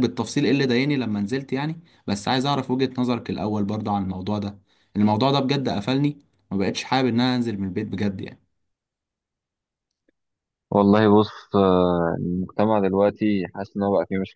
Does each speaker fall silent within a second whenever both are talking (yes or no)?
yes